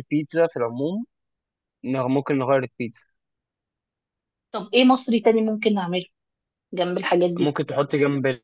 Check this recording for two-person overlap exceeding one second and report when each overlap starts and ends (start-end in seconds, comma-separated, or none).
none